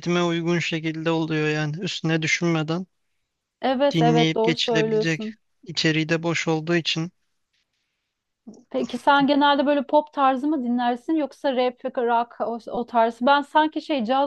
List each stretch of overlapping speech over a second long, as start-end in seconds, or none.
3.9-5.4